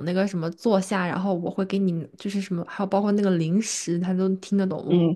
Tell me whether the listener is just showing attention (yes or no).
yes